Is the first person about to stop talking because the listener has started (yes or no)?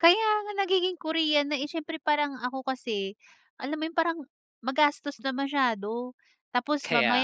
no